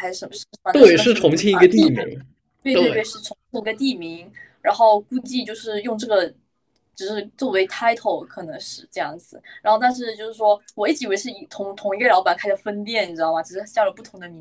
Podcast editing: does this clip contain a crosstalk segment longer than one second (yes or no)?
no